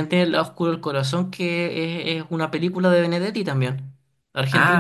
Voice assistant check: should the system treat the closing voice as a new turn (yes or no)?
yes